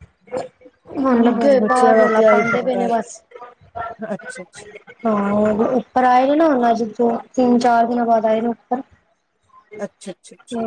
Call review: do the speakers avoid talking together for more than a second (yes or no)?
no